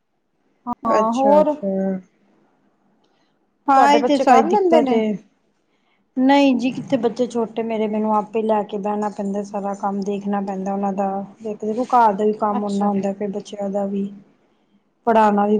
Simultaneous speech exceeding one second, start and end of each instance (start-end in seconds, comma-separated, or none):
3.7-5.0